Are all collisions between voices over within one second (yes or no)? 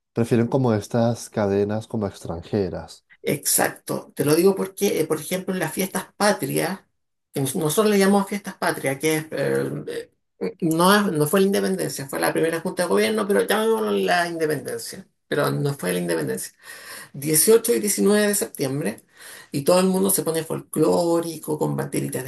yes